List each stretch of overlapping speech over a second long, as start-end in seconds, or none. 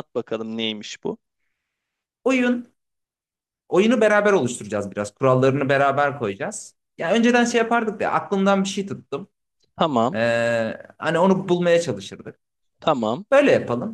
none